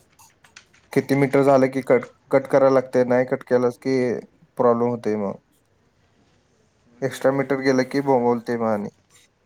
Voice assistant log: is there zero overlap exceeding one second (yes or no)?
no